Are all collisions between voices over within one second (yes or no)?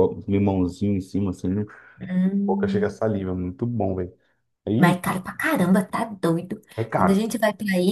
yes